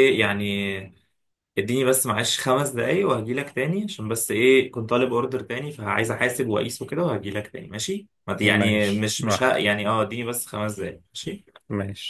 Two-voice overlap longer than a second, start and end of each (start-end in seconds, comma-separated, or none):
8.4-9.8